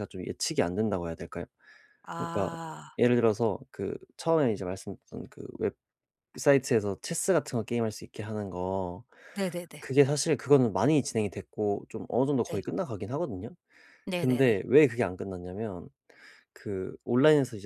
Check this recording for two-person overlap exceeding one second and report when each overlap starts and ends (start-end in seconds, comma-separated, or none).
none